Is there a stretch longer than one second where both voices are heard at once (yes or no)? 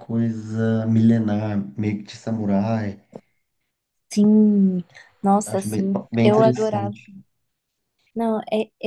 yes